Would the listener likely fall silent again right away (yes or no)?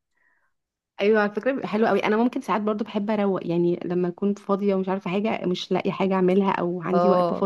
yes